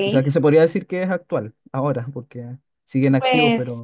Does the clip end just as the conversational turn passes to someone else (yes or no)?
yes